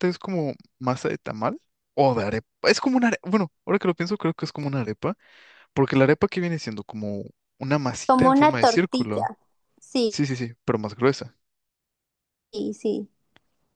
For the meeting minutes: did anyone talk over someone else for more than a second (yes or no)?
yes